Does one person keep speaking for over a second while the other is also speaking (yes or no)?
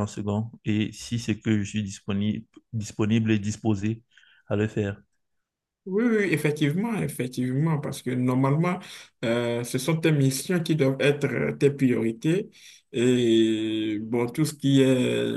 no